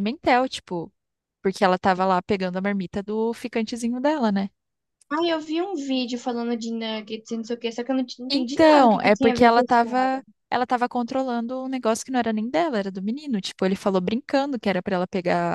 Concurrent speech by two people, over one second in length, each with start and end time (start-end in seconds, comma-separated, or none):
8.3-10.2